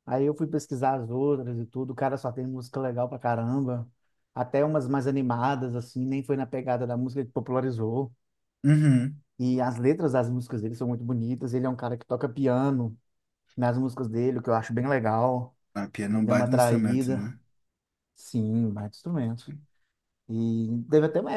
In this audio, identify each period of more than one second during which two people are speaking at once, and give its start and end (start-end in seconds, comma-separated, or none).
16.1-17.3